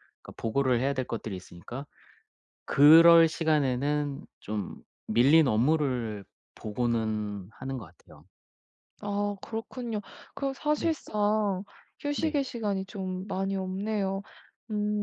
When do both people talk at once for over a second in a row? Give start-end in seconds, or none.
none